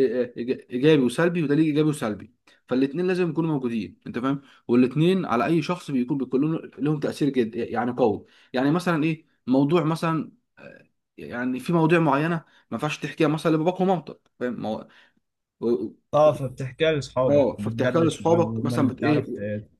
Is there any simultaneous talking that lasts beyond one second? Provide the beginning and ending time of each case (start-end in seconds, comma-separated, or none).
17.3-19.3